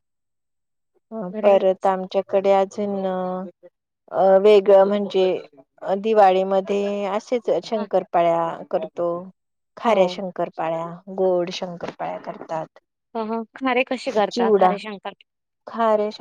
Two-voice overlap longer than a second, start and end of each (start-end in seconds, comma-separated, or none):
none